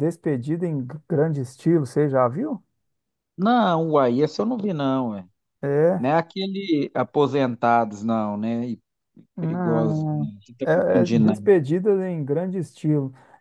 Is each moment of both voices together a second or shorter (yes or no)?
no